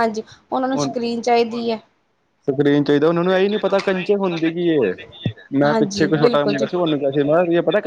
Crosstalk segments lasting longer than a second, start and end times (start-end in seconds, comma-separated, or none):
none